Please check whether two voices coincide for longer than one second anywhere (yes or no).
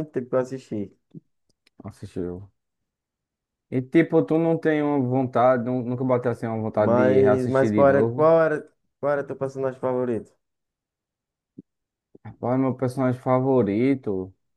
yes